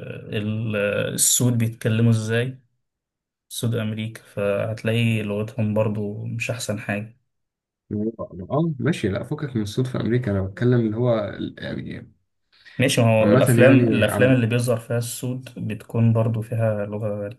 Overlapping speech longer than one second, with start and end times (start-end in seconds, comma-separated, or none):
13.2-14.4